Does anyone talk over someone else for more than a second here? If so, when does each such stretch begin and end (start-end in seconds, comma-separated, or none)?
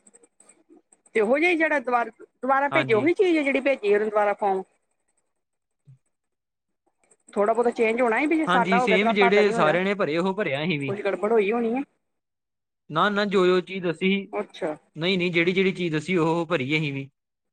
8.5-9.8